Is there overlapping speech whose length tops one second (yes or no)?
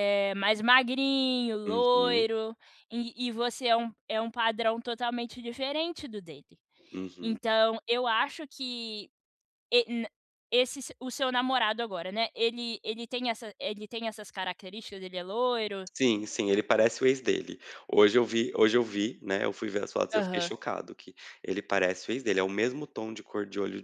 no